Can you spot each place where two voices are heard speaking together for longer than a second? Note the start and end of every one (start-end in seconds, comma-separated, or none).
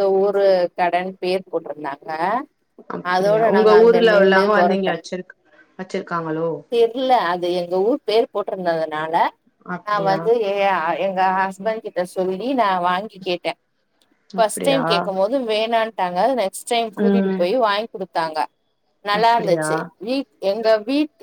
3.1-4.9